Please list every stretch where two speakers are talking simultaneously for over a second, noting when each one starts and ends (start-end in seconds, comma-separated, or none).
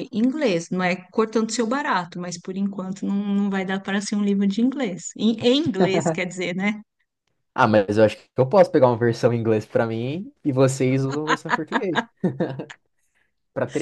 none